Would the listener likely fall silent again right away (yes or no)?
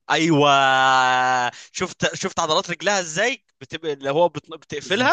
yes